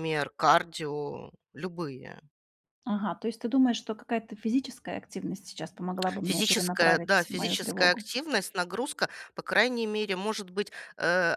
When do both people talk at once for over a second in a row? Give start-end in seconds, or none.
6.2-8.1